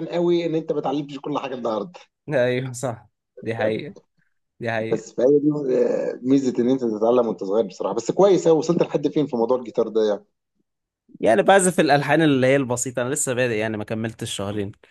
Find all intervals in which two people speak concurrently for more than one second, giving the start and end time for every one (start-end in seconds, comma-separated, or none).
none